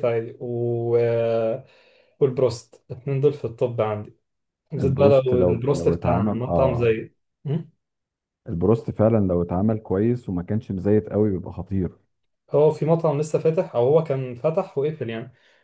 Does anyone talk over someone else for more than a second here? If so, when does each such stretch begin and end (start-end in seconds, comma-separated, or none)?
4.8-7.0